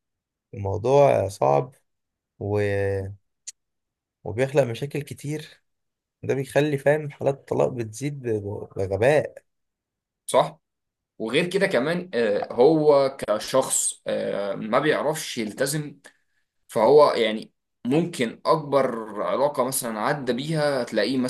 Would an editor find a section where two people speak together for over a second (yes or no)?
no